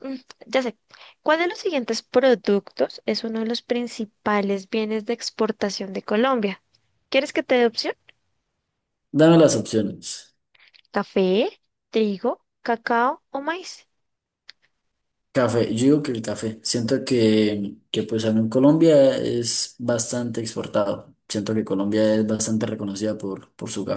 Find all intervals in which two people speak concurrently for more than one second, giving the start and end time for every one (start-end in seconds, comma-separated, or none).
none